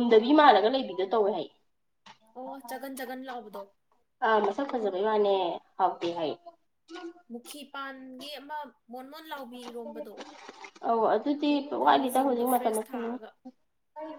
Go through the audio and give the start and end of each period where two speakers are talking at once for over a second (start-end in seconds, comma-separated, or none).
11.8-13.2